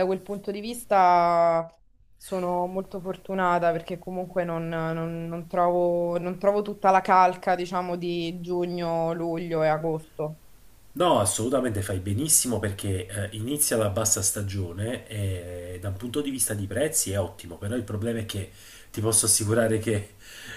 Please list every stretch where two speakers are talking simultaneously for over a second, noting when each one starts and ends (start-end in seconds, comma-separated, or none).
none